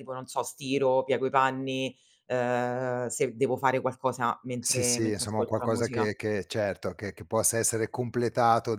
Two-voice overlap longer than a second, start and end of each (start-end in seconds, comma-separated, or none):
4.6-6.1